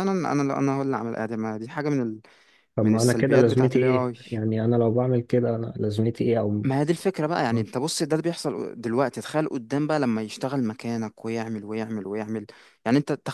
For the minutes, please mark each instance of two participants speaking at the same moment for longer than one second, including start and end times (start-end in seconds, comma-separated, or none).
2.8-4.1